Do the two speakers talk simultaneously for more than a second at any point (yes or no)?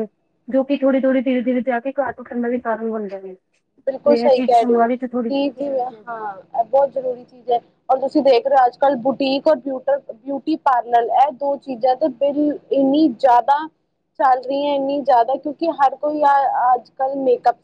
no